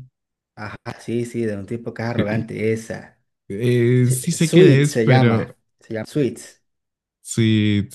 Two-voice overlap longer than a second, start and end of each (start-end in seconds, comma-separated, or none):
4.0-5.5